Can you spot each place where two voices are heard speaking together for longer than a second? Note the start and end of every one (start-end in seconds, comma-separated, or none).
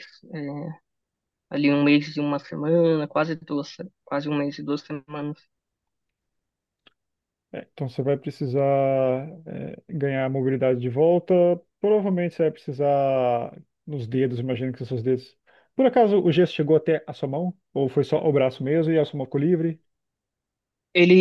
none